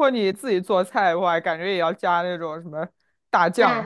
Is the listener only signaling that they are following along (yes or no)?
no